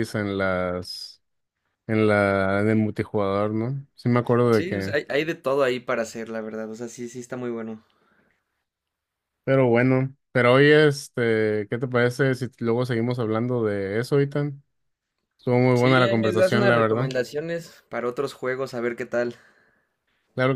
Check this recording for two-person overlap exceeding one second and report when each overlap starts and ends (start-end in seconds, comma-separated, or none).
15.8-17.1